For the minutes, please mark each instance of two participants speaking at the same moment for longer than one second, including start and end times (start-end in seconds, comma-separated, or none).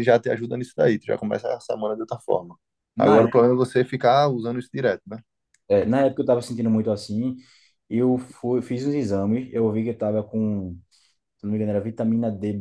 none